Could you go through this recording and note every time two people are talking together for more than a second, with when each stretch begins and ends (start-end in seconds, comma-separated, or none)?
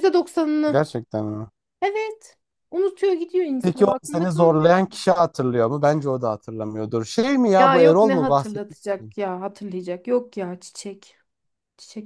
3.6-4.9, 7.5-9.1